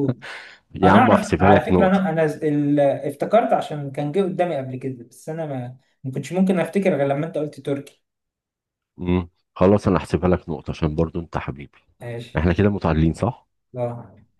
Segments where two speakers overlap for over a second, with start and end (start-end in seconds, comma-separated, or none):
0.8-2.2